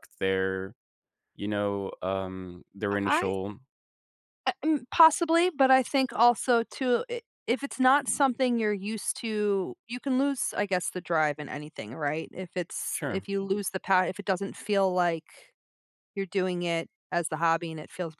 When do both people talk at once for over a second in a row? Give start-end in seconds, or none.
none